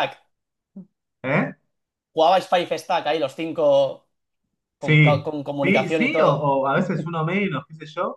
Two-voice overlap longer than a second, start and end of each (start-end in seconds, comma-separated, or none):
4.8-6.5